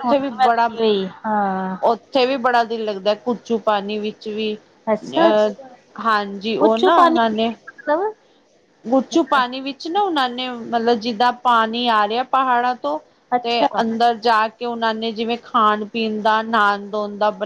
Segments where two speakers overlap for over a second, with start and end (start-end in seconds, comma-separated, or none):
none